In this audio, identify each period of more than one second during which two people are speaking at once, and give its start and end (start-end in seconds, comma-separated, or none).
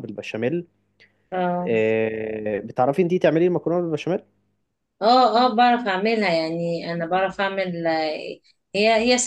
none